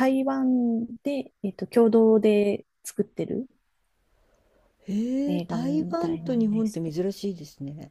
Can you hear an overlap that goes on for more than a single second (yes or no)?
yes